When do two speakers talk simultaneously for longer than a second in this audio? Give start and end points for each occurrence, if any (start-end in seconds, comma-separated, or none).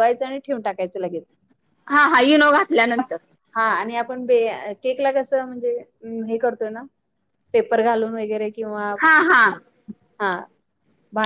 none